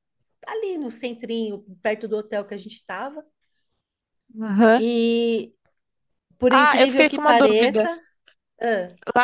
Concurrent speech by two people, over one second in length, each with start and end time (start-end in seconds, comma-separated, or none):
6.5-7.9